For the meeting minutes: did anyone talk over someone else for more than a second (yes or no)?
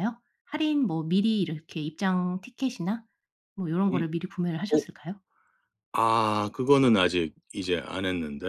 no